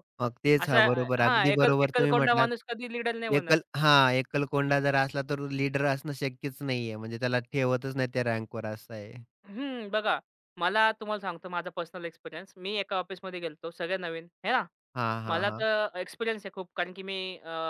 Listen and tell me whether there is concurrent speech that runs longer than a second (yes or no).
yes